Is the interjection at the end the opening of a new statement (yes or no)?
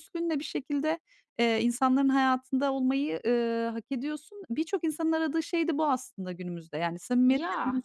no